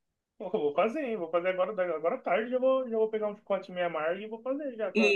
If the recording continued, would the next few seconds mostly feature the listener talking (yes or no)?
yes